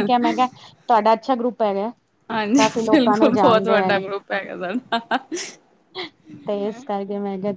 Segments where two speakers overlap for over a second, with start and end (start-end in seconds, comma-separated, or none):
2.5-3.9